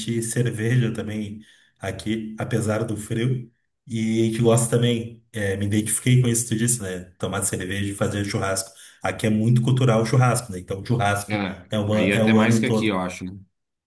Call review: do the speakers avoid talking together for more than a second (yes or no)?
no